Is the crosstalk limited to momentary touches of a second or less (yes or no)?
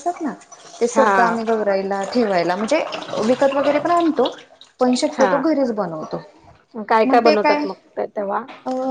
yes